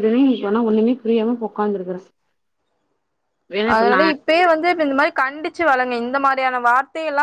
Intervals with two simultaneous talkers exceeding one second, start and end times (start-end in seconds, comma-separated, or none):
none